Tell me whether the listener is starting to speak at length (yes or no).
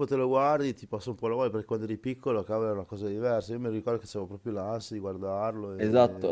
yes